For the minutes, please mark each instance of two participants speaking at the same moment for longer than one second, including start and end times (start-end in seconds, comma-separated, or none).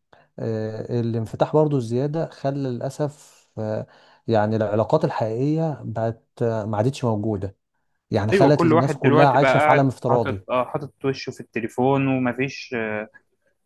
8.3-10.5